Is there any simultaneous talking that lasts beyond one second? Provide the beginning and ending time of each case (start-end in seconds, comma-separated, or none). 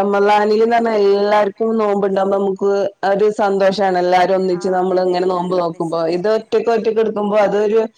4.6-6.4